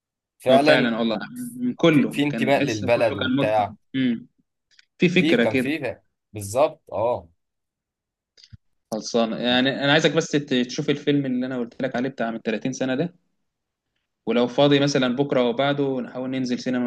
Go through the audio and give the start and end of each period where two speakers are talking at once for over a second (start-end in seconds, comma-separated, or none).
1.9-3.7